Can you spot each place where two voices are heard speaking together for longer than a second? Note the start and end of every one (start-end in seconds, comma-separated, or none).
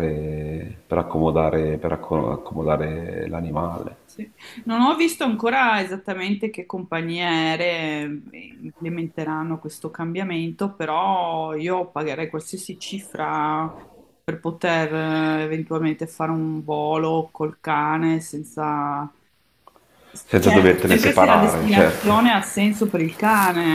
20.4-22.3